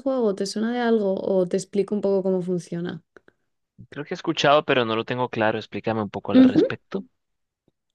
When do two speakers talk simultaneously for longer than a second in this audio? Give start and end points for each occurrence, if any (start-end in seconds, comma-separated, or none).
none